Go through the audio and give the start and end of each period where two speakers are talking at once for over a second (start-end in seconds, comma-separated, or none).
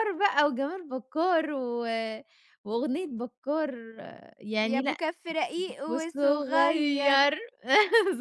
5.9-7.3